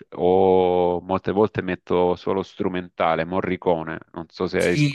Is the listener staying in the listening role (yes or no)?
no